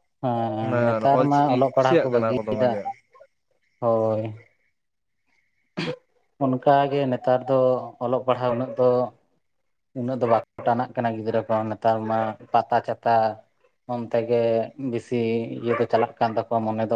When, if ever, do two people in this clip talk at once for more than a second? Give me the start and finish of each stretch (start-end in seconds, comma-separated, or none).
0.6-2.7